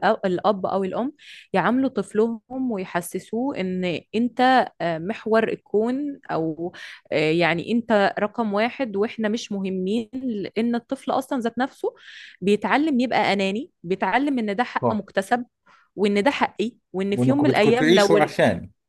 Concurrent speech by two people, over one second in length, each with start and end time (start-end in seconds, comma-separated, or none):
17.1-18.4